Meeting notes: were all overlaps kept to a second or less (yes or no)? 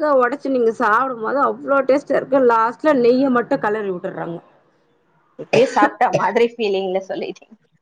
yes